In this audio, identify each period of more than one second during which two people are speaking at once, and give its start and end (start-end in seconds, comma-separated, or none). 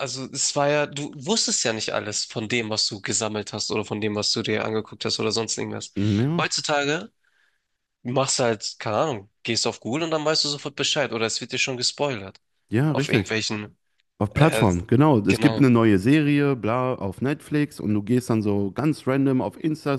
none